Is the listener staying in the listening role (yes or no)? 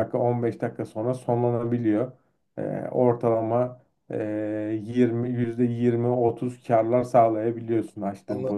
no